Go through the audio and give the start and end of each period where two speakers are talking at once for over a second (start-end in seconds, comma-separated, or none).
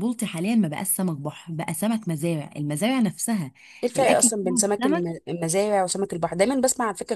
4.0-5.2